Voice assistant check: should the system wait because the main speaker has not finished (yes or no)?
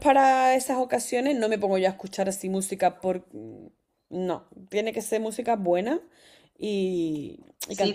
no